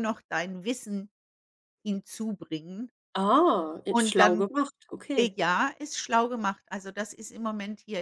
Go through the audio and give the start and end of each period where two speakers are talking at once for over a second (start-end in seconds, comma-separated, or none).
none